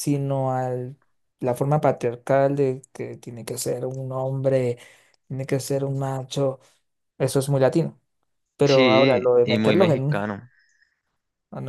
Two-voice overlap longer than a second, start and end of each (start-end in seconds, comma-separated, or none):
8.7-10.3